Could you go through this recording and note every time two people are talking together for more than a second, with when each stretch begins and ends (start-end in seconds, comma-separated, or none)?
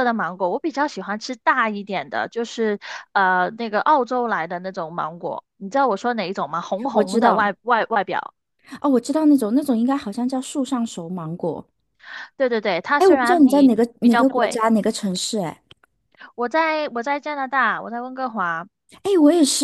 13.0-14.7